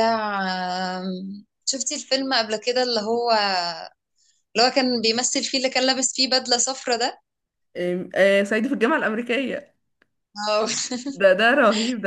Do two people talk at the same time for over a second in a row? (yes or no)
no